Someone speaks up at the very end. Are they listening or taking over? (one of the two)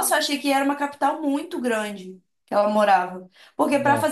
listening